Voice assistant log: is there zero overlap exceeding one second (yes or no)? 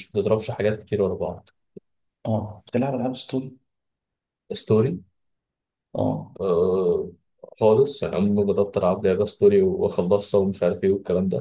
yes